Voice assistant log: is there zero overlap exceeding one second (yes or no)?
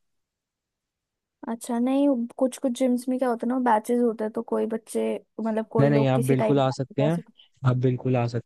no